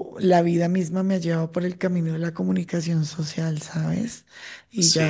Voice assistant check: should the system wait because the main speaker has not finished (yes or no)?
yes